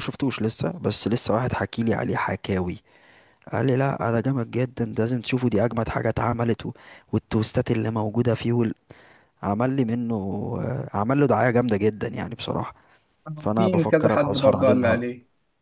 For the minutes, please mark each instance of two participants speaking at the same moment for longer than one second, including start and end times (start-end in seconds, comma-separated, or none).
13.6-15.0